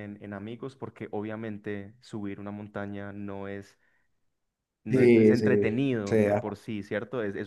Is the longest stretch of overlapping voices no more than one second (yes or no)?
no